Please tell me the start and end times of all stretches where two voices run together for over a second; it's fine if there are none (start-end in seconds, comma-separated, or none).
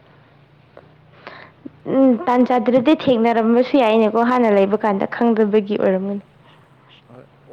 2.8-6.2